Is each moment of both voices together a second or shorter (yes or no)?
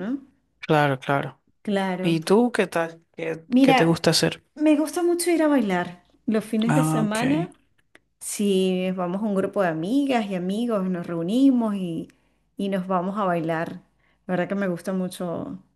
yes